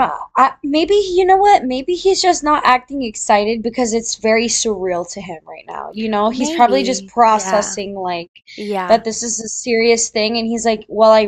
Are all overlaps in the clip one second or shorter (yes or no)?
no